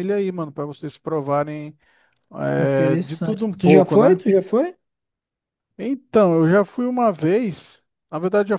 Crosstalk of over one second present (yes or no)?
yes